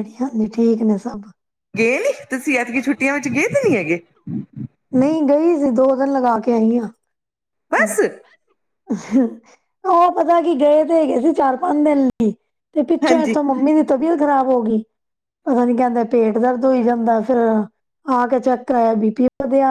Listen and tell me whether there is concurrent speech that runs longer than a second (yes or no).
no